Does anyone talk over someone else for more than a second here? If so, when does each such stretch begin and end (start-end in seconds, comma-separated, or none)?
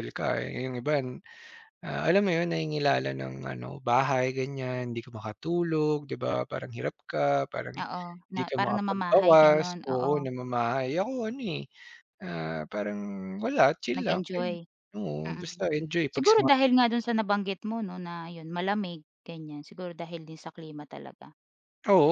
8.3-10.1